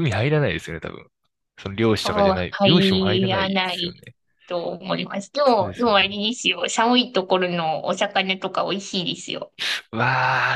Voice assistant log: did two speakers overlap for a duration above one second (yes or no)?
yes